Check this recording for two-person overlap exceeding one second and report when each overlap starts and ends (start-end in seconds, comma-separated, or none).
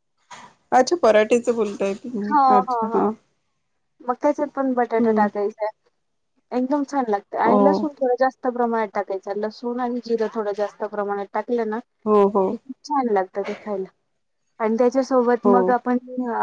none